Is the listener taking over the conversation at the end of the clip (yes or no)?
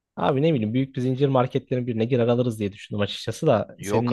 yes